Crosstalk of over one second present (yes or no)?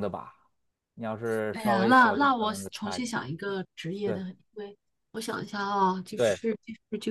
yes